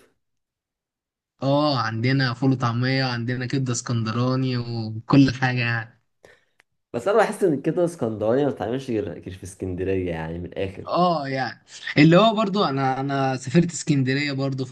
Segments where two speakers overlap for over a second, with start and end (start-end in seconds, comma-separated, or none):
none